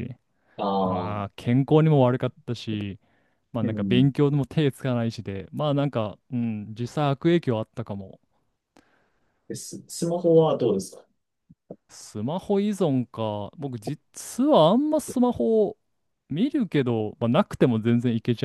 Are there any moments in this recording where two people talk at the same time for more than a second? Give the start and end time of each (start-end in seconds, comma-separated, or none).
none